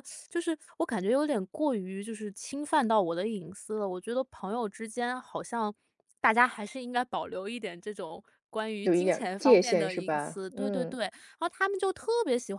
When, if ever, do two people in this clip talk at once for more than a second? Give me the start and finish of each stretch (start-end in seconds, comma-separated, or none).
8.8-11.0